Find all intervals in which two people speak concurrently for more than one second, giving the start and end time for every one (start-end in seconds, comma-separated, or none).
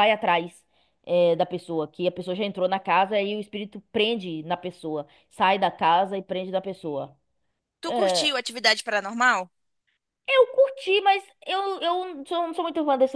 none